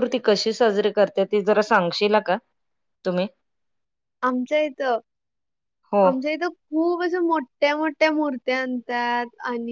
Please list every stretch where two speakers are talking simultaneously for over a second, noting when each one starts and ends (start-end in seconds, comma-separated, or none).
none